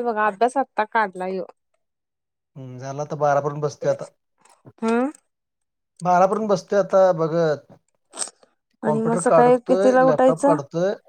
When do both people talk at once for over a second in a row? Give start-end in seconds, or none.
8.9-10.6